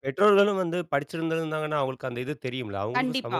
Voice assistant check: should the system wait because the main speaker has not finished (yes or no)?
no